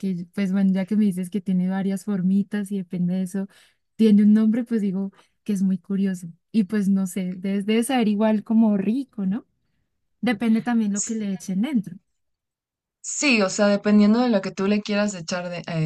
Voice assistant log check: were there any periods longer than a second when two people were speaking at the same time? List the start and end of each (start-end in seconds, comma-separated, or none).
none